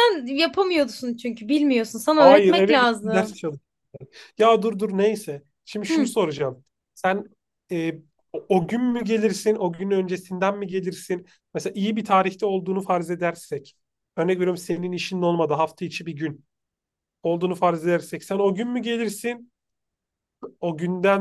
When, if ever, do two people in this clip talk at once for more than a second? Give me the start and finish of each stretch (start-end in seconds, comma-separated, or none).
2.2-3.4